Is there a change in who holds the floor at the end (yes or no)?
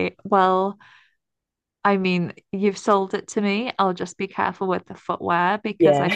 no